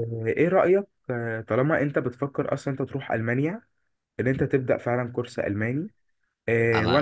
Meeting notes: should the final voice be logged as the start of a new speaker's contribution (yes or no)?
no